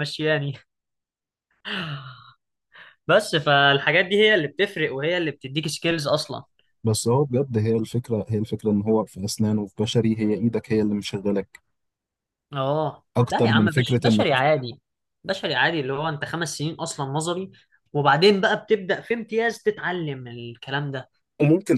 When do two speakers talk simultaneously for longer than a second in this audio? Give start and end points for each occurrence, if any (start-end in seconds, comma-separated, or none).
13.2-14.4